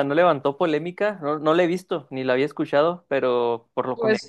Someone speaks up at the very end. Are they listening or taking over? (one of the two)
taking over